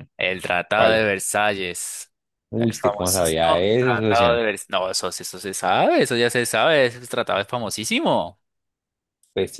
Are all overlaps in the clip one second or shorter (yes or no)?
no